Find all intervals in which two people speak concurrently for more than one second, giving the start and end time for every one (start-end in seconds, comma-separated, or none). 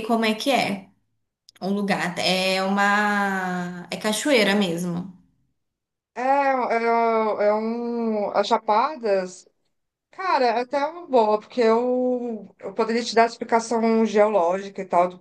none